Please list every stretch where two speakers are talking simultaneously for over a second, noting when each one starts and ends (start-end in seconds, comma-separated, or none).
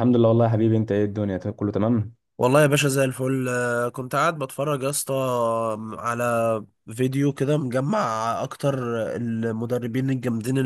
none